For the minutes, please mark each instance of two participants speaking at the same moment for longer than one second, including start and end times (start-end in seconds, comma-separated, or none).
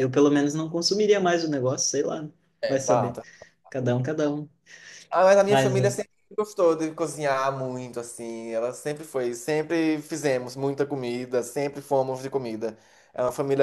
none